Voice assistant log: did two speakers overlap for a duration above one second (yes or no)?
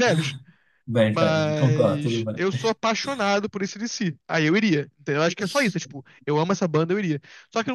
yes